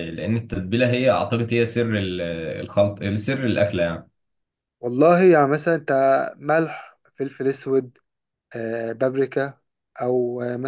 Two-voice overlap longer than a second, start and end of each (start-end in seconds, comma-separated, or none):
none